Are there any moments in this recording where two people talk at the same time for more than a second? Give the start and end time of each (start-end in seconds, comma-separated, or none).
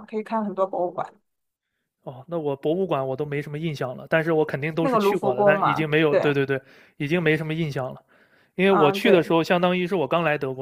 4.8-6.3